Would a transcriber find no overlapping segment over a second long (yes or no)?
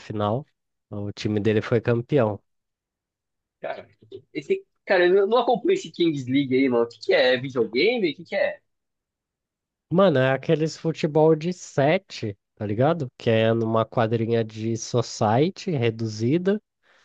yes